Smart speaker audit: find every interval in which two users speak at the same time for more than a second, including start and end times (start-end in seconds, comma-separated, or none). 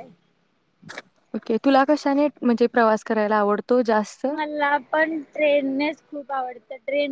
none